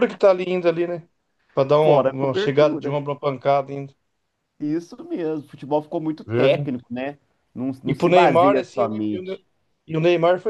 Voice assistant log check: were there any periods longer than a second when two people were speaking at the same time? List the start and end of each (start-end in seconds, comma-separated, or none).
1.8-3.0, 7.9-9.4